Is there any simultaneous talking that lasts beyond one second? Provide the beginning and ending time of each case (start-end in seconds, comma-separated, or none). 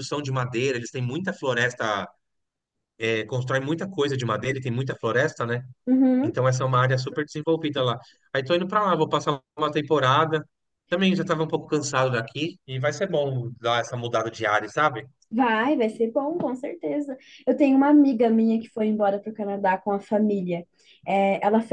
none